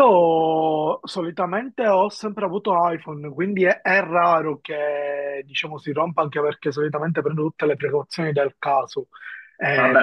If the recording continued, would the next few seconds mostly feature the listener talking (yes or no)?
yes